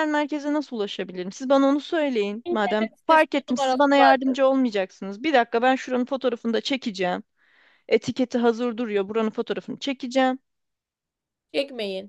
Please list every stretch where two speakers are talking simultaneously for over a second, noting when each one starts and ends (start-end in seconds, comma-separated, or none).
2.4-4.3